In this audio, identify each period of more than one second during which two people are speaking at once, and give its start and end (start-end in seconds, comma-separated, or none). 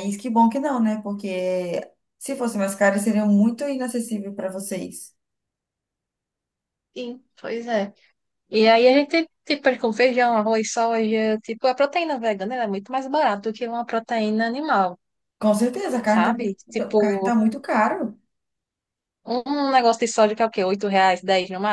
16.0-17.3